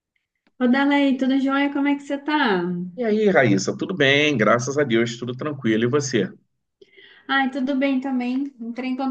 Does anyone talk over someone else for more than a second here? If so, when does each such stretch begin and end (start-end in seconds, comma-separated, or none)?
none